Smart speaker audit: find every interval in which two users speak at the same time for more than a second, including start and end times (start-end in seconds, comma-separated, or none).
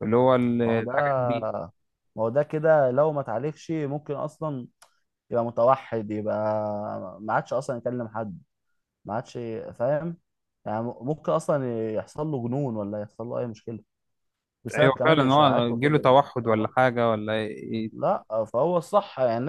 14.8-16.7